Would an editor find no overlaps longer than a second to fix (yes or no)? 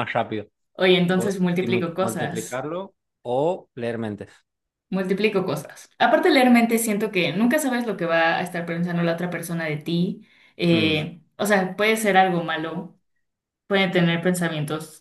no